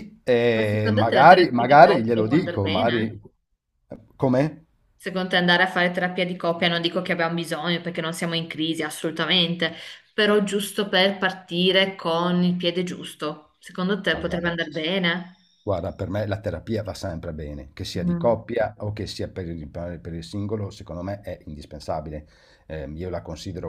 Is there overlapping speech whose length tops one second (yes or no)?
yes